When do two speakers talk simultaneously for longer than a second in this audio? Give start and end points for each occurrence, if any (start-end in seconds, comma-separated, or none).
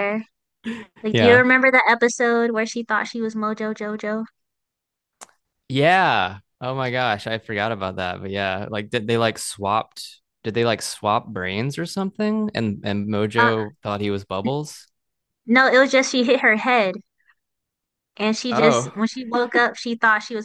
none